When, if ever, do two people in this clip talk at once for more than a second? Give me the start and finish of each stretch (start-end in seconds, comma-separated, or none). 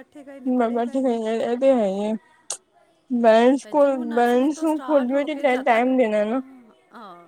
3.6-6.4